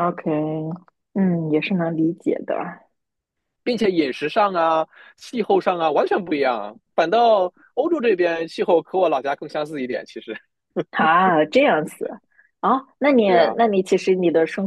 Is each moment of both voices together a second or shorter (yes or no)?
yes